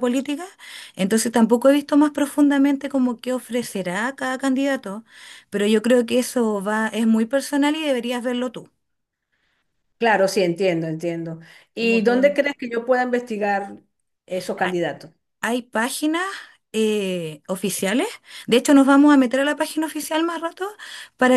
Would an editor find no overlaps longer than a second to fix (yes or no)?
yes